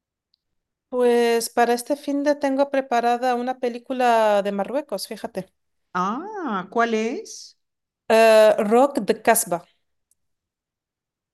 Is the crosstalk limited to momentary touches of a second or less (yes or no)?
yes